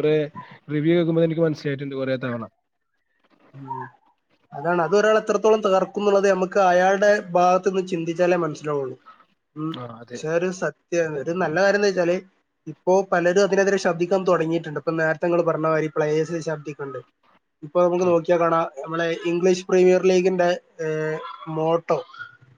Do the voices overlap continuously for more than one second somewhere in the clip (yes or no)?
no